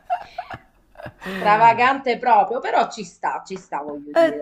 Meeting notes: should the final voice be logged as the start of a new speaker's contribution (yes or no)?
yes